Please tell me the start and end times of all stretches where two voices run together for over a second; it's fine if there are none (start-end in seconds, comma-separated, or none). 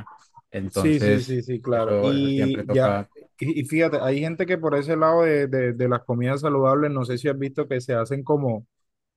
0.7-3.0